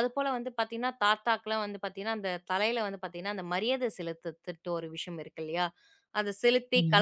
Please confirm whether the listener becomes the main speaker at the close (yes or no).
no